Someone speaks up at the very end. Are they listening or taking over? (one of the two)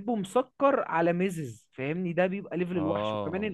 listening